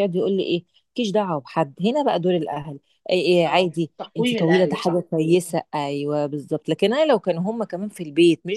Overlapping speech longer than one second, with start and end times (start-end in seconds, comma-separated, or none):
3.5-5.1